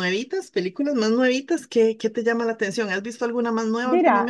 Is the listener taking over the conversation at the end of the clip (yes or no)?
yes